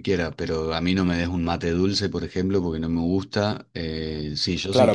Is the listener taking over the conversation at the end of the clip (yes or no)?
yes